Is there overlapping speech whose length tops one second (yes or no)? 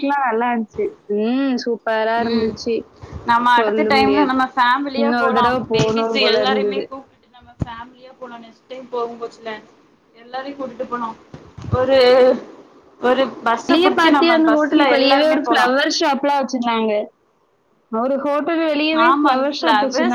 yes